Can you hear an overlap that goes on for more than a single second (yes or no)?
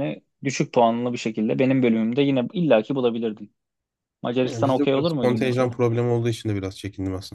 yes